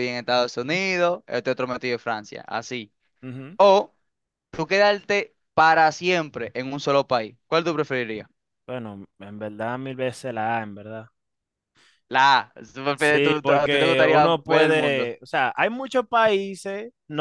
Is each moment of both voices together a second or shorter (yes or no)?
no